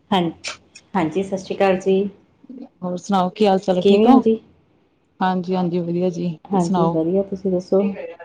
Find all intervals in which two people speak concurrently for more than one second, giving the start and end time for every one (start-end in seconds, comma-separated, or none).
none